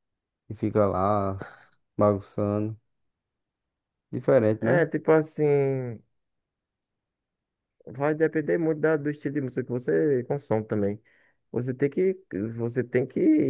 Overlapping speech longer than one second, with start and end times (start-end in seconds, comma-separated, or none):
none